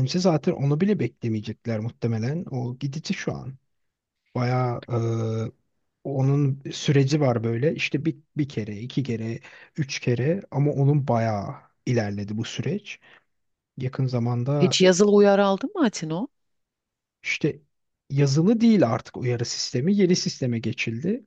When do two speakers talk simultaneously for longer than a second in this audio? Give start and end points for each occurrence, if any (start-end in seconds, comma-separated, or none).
none